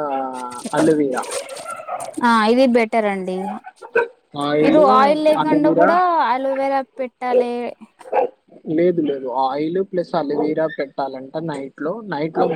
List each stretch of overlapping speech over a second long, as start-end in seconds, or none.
none